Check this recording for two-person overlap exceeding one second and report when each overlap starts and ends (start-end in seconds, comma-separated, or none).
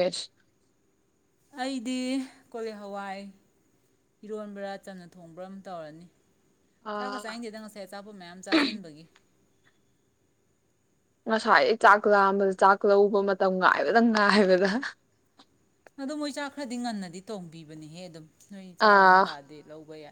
none